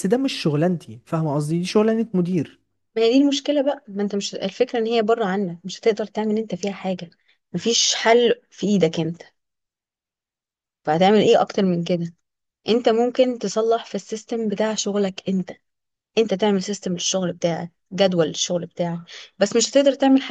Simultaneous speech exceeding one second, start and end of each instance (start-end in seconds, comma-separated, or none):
none